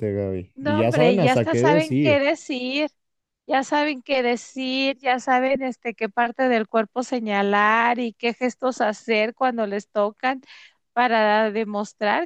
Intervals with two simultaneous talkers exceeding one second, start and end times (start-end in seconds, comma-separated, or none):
0.6-2.2